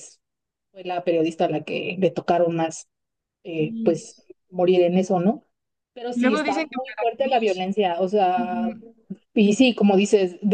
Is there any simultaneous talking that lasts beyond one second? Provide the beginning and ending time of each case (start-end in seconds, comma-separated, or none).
6.2-7.6